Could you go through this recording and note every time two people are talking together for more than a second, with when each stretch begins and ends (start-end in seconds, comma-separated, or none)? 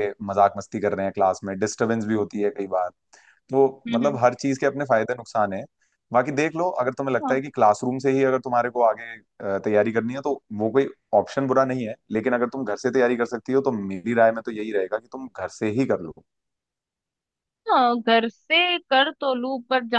none